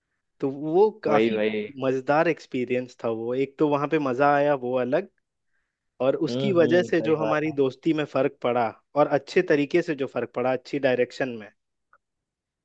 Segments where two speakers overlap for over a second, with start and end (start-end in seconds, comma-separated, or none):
6.3-7.6